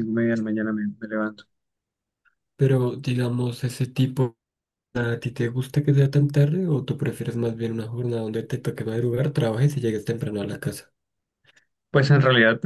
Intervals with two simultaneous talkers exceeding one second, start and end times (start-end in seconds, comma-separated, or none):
none